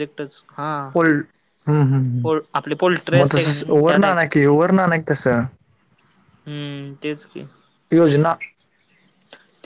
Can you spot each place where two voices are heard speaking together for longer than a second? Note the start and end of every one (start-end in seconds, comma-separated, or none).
2.2-4.2